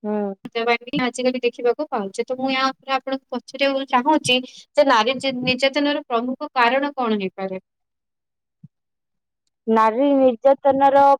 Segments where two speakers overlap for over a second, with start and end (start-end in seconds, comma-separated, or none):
none